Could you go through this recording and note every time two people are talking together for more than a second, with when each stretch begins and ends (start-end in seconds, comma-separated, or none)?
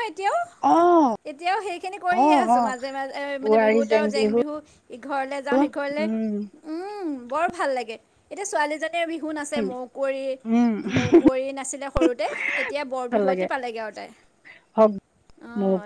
none